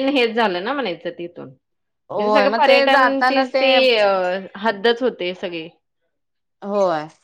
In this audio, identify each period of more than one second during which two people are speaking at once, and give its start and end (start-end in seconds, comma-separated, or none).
2.1-3.4